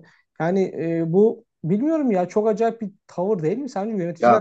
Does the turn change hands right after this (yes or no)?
yes